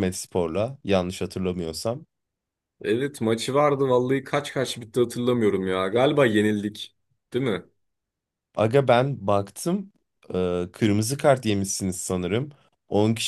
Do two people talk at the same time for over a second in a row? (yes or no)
no